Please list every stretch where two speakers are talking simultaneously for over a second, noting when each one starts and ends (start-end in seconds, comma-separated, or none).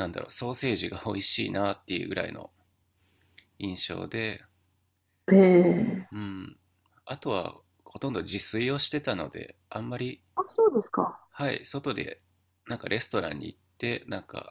none